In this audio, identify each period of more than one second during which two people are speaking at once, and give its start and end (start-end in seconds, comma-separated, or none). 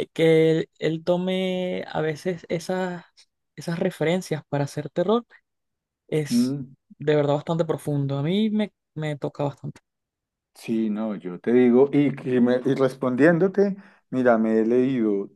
none